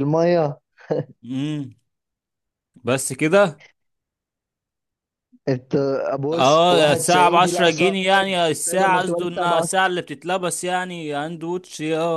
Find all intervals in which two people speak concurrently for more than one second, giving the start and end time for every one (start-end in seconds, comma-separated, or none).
6.3-9.7